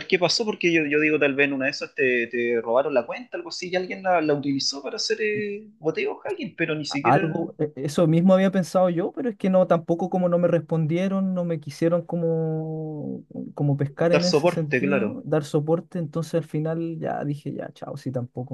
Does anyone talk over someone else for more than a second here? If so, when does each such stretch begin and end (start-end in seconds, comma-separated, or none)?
14.0-15.2